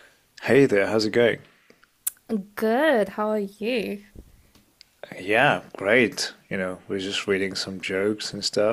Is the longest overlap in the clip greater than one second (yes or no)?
no